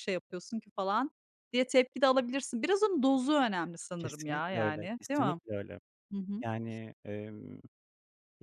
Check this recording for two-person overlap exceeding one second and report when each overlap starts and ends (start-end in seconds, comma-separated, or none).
4.0-5.4